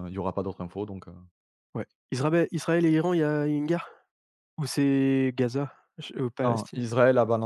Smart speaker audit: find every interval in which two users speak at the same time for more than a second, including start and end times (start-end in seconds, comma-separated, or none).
none